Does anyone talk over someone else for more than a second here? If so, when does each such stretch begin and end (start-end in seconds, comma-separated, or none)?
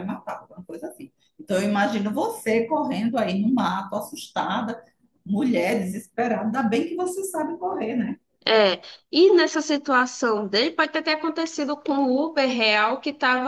none